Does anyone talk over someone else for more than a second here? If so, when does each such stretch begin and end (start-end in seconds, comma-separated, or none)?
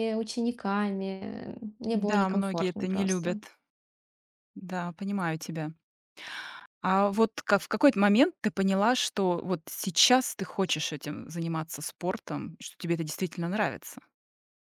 1.9-3.4